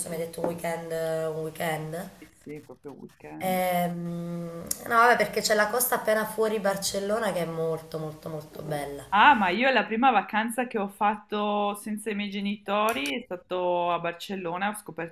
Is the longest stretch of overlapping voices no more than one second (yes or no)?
yes